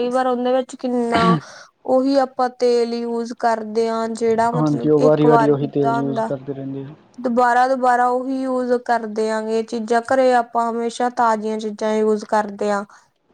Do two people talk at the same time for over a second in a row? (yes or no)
yes